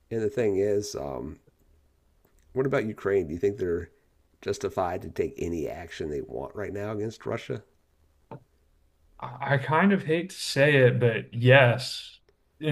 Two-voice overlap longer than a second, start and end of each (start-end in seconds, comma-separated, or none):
none